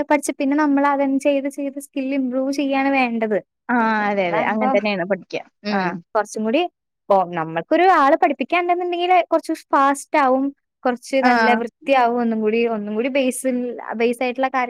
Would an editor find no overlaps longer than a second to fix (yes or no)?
yes